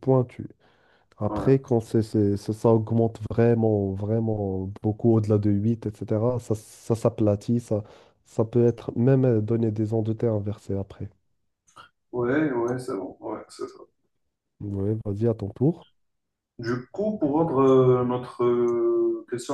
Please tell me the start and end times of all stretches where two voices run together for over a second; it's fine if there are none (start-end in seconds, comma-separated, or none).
none